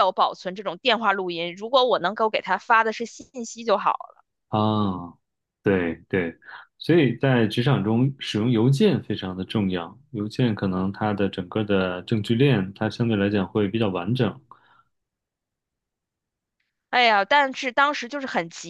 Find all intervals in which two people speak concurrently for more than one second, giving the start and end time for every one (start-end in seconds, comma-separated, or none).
none